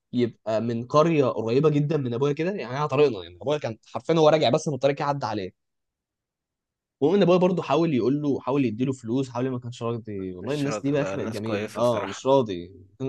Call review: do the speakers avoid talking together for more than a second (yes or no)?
no